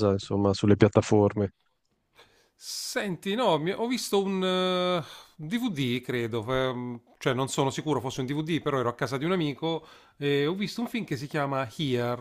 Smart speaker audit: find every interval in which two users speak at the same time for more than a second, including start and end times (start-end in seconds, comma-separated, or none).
none